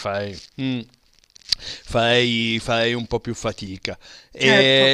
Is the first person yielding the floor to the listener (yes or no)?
no